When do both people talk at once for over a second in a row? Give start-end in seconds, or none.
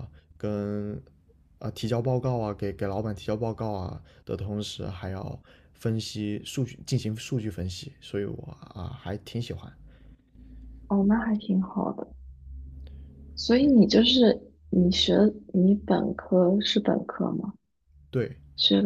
none